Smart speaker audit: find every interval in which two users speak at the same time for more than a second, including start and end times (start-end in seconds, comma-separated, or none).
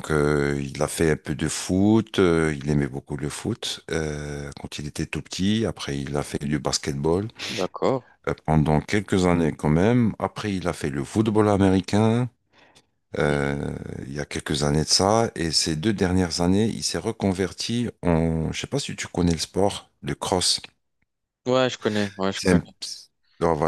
none